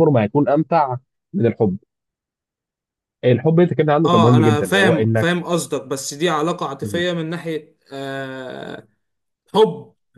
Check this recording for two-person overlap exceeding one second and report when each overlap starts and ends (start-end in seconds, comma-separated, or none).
4.0-5.3